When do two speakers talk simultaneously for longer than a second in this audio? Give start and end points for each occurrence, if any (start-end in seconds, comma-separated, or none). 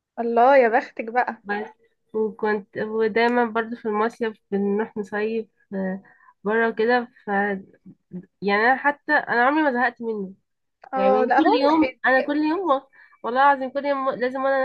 10.9-12.5